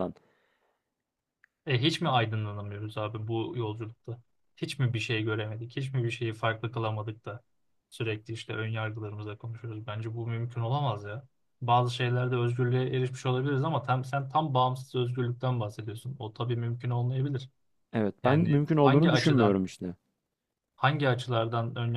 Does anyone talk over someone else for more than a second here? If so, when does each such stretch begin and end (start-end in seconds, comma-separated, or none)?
18.2-19.6